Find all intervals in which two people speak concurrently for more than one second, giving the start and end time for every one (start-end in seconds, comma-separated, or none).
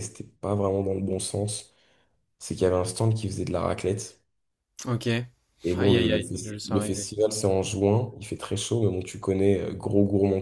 5.8-7.1